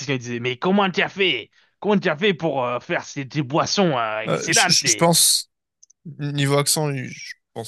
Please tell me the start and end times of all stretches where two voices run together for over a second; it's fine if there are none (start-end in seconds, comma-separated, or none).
none